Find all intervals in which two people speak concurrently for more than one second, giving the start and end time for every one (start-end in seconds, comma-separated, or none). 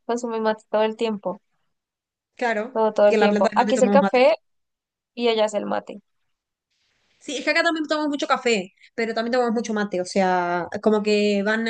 2.7-4.2